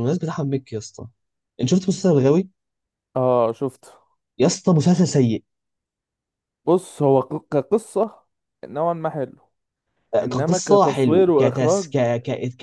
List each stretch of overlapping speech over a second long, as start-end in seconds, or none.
10.2-11.9